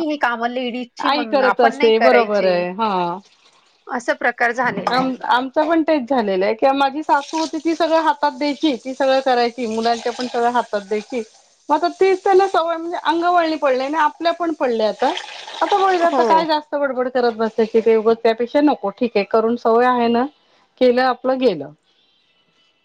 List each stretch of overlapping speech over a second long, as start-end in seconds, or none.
1.1-2.6